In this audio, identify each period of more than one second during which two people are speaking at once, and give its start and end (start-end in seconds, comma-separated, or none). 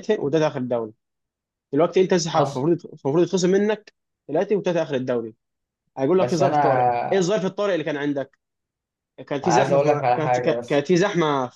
9.4-10.9